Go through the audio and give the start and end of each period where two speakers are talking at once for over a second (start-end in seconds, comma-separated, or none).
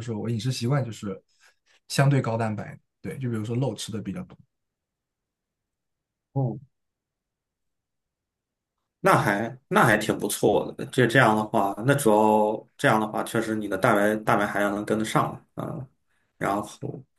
none